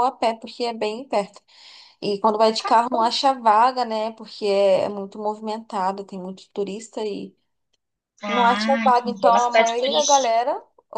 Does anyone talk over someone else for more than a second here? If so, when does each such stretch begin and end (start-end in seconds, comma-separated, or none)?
8.2-10.3